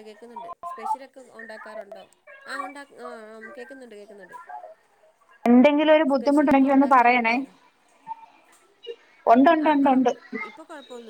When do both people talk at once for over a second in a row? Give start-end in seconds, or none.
6.2-7.3